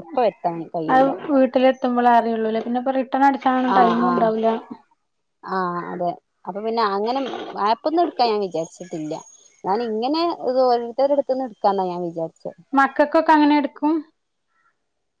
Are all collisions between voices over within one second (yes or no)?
yes